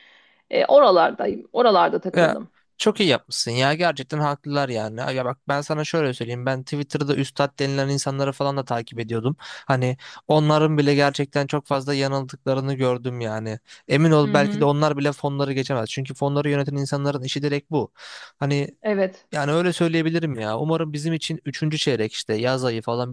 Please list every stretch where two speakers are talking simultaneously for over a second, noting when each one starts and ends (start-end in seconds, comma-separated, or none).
none